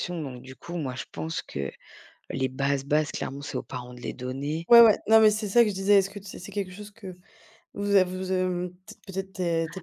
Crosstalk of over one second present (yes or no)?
no